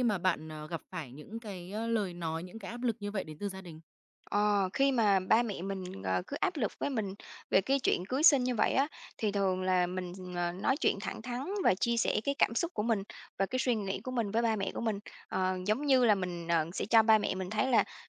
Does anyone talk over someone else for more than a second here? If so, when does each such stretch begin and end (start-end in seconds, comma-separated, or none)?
none